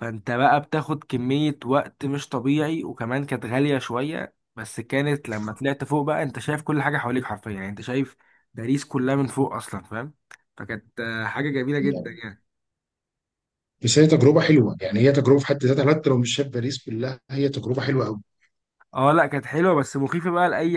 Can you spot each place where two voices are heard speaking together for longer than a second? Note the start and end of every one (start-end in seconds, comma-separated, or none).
none